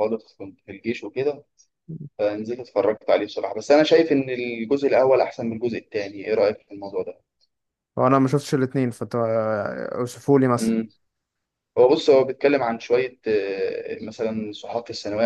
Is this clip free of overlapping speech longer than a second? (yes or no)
yes